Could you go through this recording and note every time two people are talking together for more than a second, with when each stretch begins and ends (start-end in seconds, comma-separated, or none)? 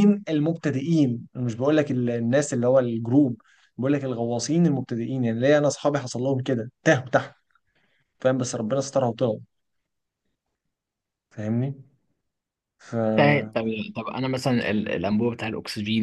none